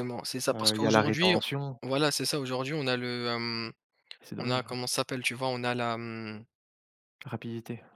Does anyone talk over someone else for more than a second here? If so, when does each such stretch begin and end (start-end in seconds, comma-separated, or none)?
0.5-1.8